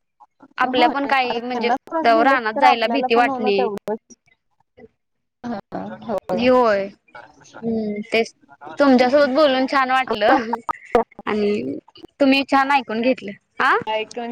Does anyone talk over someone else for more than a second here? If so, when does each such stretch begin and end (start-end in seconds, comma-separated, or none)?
0.8-3.6